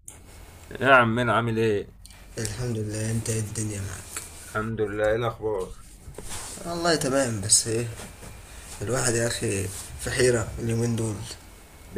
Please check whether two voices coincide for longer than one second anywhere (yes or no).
no